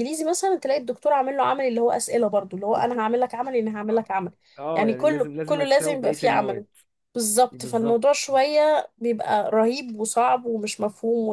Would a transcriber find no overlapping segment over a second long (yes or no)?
no